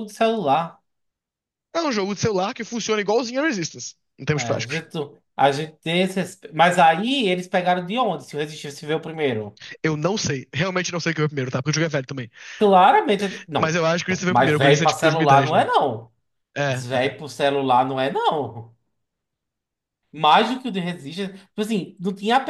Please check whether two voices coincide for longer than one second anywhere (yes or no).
yes